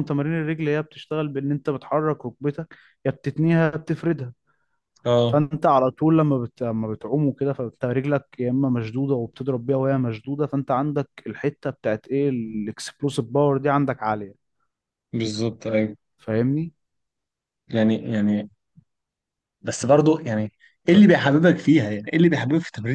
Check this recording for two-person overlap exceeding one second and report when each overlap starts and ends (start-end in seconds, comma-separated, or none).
none